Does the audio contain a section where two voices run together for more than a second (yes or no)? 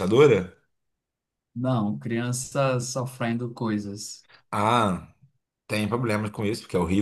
no